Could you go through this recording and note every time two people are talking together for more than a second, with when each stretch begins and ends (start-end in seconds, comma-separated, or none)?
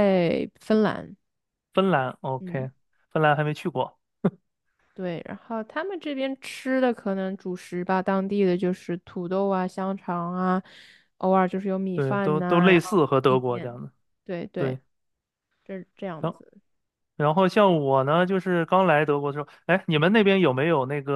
11.9-13.8